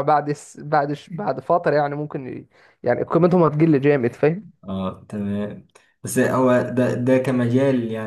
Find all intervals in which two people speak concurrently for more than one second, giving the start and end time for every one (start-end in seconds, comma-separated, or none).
none